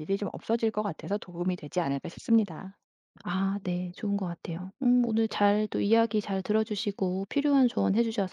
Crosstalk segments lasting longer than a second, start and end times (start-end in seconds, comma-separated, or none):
none